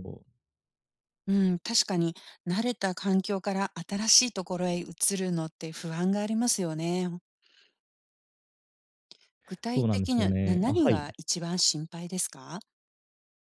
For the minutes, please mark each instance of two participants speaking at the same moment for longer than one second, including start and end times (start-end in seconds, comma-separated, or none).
9.7-11.0